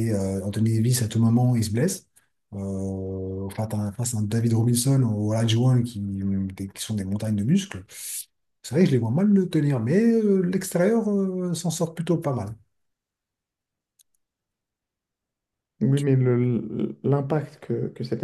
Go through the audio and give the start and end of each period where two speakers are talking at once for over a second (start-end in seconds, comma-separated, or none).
none